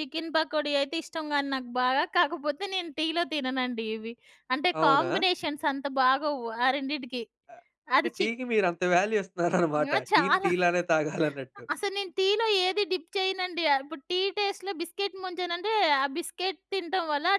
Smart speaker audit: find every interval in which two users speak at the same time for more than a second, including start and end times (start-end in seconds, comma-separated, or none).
none